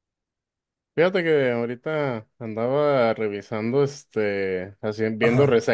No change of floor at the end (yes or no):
yes